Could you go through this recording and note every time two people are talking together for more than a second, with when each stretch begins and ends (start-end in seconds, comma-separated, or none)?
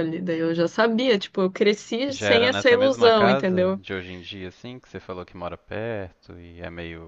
2.1-3.8